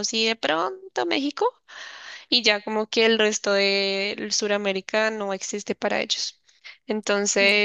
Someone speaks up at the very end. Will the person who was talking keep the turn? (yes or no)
yes